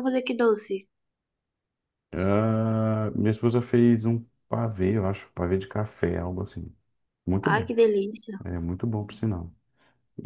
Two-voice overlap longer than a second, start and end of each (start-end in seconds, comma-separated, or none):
none